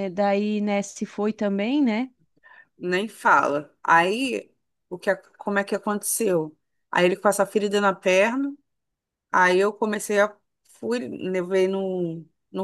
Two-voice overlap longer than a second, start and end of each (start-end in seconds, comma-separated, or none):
none